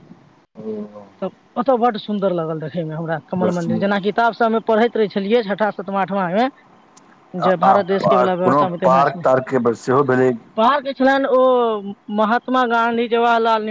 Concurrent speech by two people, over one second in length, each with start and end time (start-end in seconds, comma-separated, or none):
none